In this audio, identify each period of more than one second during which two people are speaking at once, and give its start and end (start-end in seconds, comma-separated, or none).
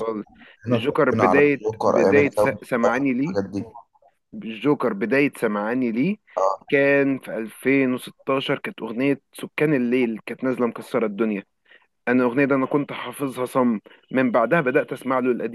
0.7-2.6